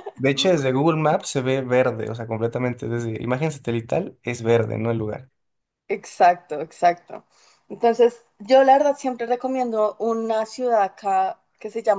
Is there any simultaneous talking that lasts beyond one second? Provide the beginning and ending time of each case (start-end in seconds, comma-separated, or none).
none